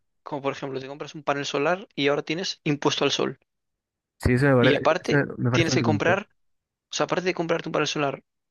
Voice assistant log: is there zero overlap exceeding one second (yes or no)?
no